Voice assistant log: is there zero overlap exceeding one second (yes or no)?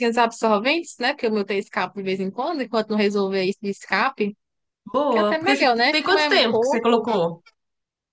no